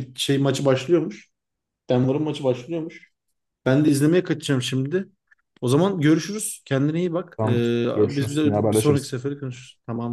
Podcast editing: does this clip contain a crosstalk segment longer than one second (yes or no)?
yes